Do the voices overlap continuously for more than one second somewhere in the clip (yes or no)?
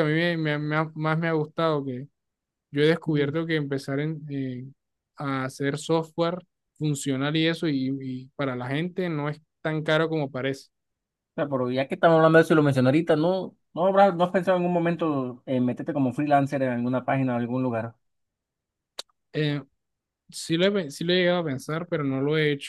no